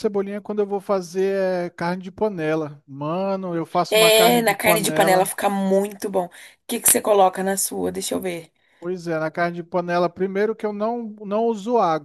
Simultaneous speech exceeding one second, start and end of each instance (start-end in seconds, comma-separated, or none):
3.9-5.3